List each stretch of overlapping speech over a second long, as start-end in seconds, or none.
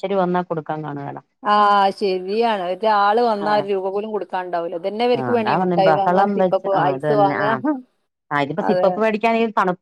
5.2-7.4